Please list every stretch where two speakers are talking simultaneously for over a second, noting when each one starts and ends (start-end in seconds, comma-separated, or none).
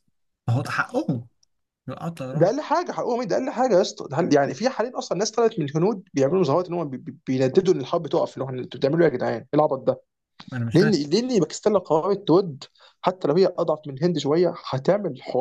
none